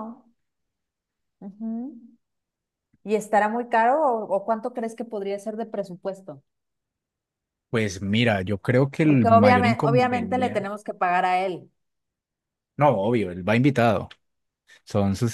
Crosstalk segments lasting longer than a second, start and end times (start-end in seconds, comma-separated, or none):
9.0-10.7